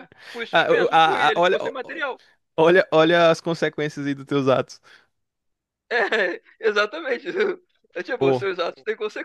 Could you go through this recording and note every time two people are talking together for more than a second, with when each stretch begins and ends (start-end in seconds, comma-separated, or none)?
0.5-2.0